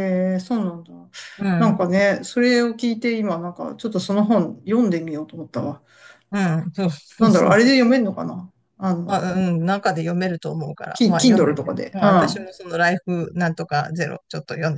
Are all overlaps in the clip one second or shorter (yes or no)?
no